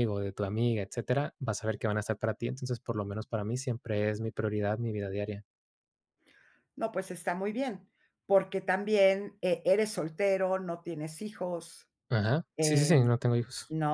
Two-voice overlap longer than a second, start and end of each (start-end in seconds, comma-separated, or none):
none